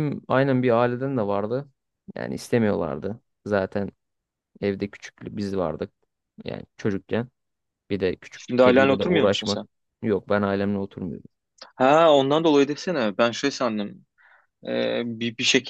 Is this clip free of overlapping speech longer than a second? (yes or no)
no